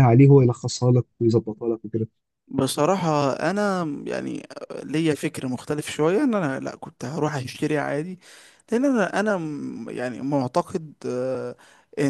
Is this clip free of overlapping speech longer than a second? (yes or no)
yes